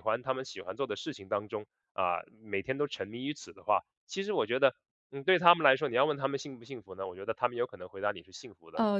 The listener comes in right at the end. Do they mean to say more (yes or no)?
yes